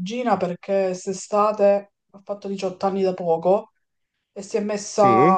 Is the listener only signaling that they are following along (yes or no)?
yes